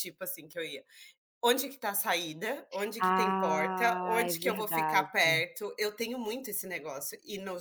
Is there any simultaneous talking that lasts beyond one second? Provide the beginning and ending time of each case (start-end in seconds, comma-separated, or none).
3.0-5.4